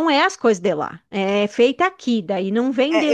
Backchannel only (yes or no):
no